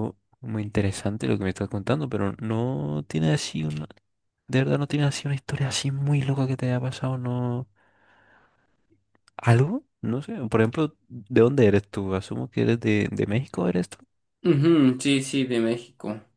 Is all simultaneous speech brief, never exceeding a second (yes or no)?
yes